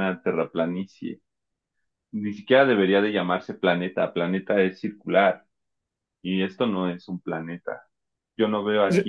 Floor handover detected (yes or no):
no